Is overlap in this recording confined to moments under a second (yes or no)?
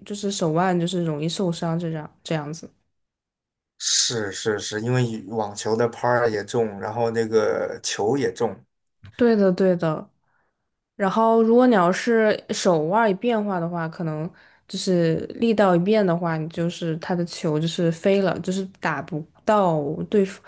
yes